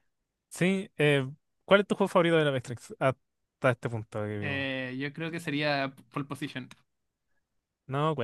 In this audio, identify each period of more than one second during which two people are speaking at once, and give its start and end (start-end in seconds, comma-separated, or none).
none